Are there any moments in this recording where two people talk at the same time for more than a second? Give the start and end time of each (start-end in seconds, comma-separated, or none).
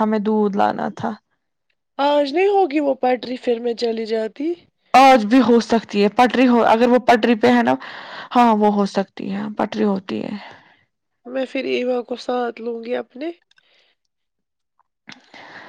none